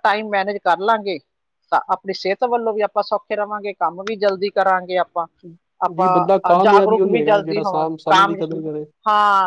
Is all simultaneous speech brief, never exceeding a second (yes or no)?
no